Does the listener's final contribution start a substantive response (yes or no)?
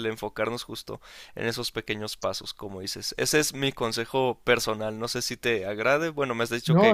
yes